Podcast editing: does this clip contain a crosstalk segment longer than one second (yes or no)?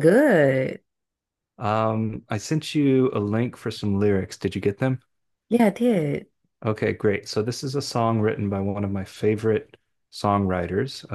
no